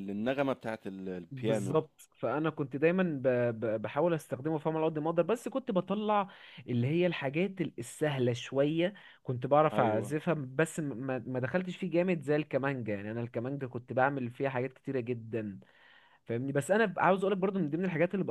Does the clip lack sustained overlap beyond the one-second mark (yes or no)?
yes